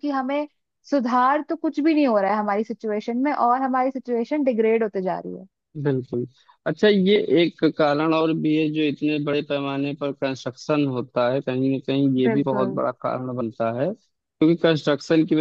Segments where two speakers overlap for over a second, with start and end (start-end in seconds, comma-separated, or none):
none